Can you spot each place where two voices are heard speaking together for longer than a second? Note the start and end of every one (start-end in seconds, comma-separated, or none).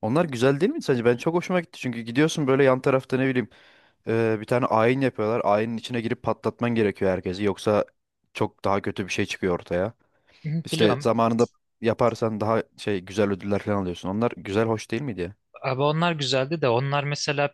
none